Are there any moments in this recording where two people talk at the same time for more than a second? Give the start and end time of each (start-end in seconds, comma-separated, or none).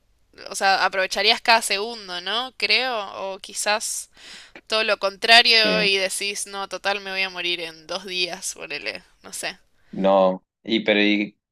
none